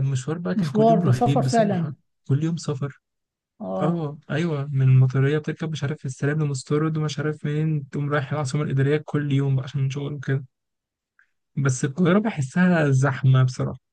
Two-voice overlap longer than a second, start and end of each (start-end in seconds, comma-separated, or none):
0.6-1.9